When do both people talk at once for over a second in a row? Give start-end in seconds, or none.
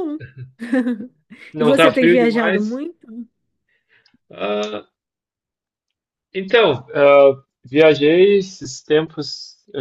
1.6-2.8